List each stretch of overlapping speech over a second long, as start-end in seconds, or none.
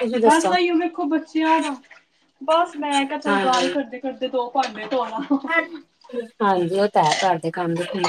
none